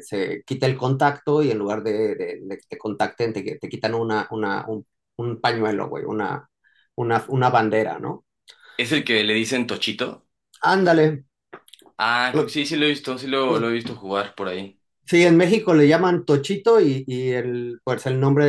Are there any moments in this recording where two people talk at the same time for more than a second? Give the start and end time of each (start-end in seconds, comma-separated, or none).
none